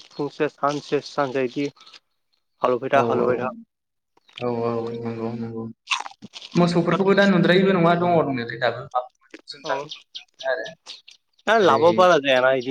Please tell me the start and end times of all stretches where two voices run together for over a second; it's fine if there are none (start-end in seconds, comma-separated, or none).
none